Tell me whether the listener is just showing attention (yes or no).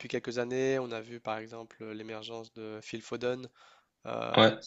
yes